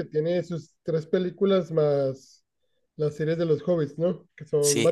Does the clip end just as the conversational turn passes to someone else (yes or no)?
yes